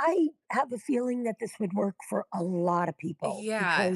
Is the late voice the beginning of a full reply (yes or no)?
yes